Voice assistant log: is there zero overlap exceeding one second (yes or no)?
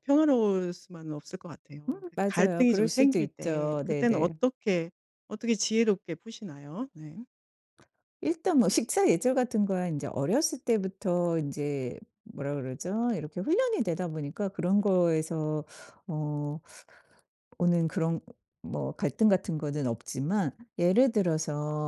no